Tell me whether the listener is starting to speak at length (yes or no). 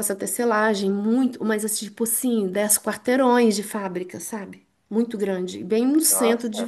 no